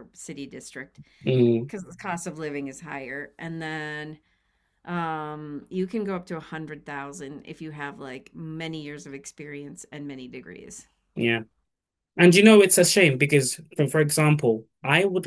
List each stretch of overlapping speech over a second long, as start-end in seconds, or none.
none